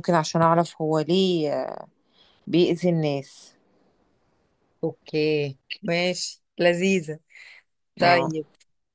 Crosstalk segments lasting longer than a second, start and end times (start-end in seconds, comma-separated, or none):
none